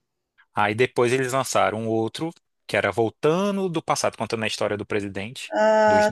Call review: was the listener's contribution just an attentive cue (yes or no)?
no